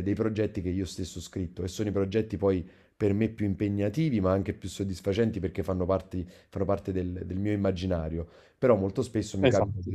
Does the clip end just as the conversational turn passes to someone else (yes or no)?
no